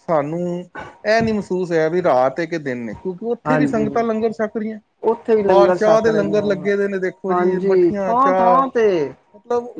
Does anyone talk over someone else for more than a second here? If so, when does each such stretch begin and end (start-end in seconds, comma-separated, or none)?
5.5-6.7, 7.3-8.6